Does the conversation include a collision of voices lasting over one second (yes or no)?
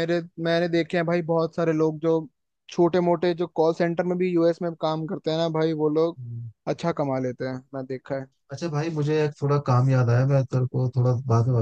no